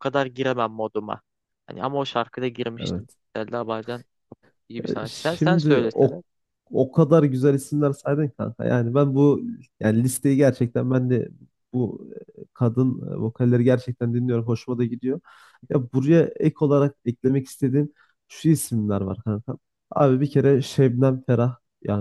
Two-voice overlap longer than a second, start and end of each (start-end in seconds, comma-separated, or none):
4.9-6.2